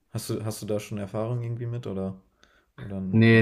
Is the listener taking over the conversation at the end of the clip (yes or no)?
yes